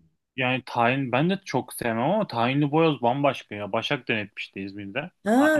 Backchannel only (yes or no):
no